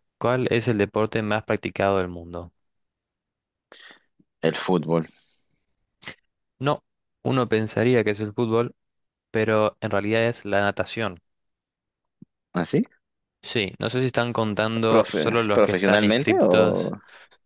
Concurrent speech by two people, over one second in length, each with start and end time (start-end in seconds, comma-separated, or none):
14.9-16.9